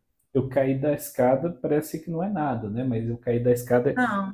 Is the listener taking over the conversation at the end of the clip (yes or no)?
yes